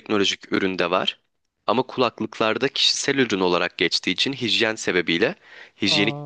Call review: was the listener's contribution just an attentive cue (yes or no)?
yes